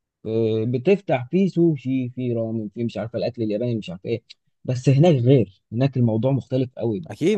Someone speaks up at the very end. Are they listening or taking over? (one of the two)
taking over